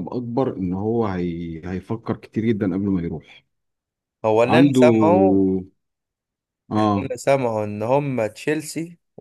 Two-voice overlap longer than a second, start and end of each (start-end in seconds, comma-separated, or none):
none